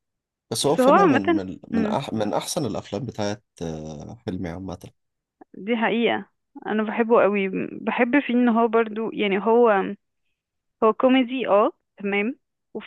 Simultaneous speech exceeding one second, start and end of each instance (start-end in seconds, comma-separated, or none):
0.6-2.0